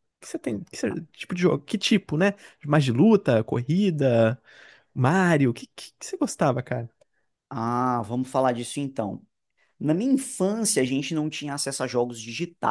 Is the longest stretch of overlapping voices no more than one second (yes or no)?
yes